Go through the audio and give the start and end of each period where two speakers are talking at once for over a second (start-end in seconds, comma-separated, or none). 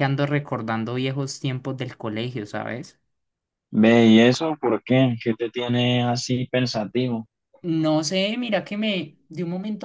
none